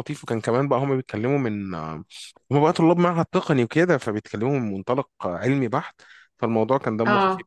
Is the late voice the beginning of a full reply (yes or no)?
no